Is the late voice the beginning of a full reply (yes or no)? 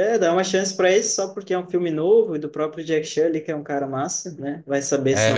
yes